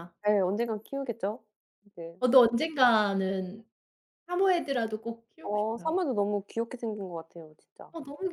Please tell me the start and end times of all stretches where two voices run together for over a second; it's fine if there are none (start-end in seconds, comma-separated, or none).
none